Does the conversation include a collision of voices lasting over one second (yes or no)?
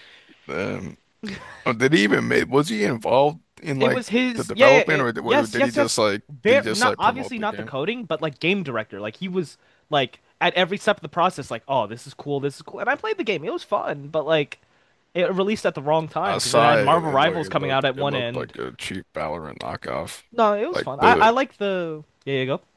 yes